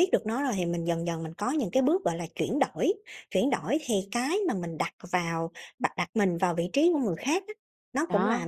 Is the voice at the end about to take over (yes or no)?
no